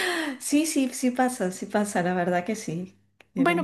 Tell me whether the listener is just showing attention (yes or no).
no